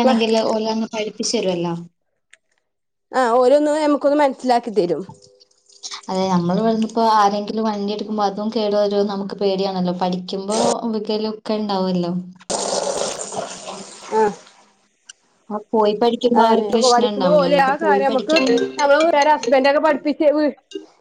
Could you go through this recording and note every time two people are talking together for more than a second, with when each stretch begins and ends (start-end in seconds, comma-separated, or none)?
16.4-18.4